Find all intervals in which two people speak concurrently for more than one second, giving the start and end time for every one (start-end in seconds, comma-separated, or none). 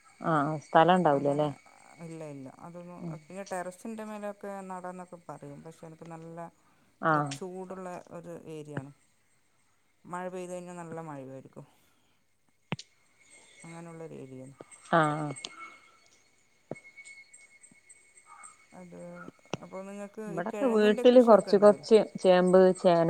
20.3-21.9